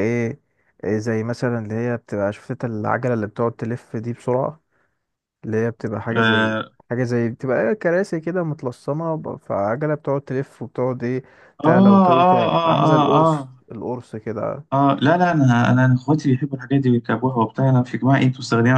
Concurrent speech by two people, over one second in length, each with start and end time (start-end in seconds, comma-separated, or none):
11.7-13.6